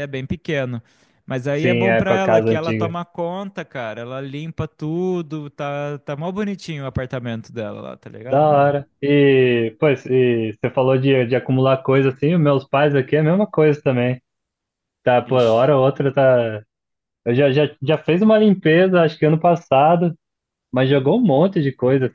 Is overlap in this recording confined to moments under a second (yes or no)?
no